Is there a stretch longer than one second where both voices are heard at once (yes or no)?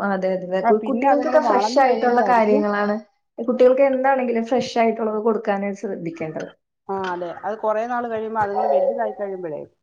yes